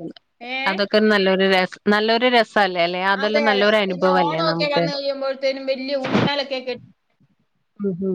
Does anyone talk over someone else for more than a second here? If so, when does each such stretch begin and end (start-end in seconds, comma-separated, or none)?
none